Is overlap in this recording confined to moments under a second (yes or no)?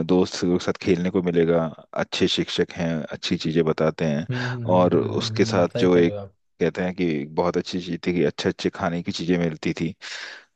no